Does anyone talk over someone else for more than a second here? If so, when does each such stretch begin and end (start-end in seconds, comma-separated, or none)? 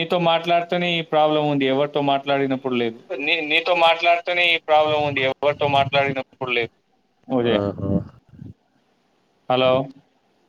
none